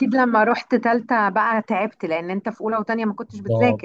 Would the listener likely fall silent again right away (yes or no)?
no